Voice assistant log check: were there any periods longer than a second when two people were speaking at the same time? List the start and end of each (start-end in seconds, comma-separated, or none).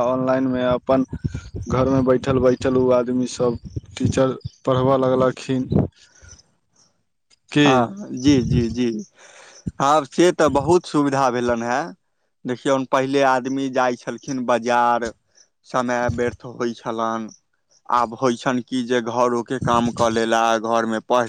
none